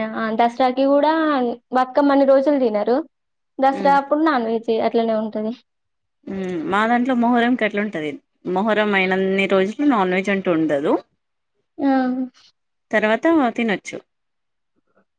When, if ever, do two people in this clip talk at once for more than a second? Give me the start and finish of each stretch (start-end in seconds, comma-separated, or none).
none